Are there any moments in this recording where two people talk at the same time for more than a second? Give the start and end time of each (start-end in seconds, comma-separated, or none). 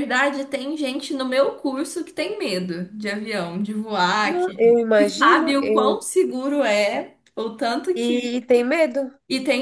4.2-6.0